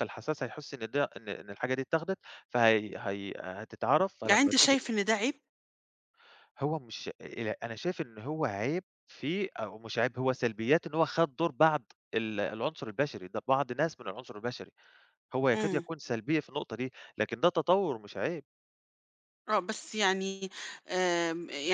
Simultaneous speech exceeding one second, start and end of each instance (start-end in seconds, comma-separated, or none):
none